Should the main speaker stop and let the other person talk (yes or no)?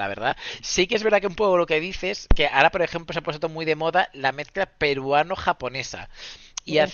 no